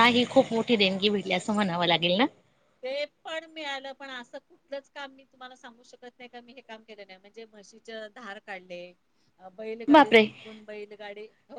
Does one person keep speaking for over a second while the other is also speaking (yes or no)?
no